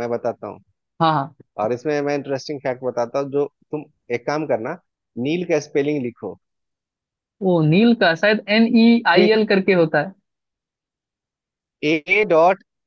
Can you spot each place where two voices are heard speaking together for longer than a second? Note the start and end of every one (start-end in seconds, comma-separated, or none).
none